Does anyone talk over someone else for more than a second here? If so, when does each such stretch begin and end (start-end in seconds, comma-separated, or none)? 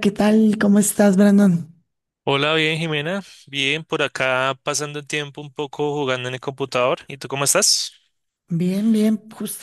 none